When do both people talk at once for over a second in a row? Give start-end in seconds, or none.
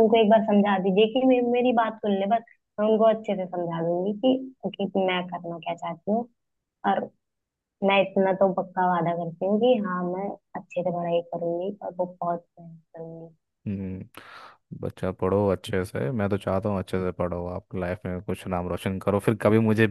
none